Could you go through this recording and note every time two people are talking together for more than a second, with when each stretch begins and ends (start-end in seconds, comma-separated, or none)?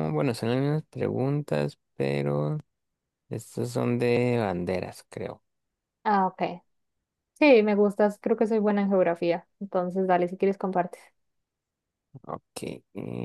none